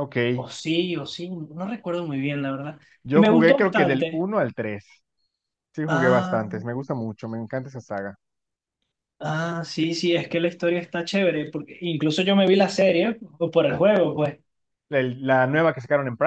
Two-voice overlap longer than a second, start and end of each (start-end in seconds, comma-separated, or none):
3.0-4.3